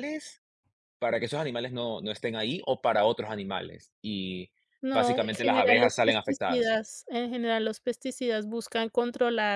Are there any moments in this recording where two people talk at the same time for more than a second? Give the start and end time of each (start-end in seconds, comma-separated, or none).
4.9-6.8